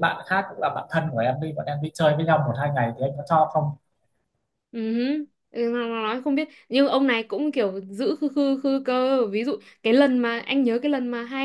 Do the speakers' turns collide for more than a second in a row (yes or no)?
no